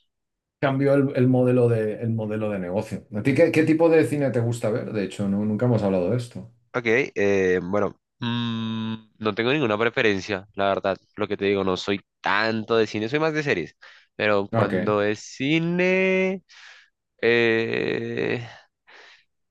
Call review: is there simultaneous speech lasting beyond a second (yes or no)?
no